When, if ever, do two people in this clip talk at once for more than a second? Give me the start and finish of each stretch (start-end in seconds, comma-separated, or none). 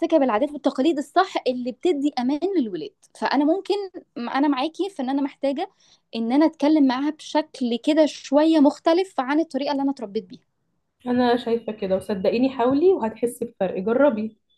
none